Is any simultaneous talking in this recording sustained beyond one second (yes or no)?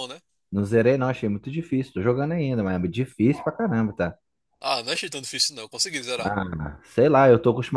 no